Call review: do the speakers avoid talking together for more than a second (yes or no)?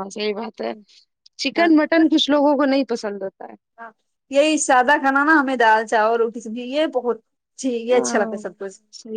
yes